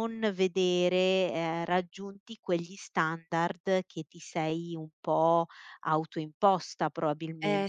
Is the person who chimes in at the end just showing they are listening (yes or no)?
yes